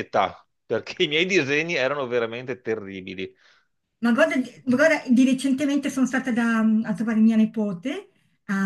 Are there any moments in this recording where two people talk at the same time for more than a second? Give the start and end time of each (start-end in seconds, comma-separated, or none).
none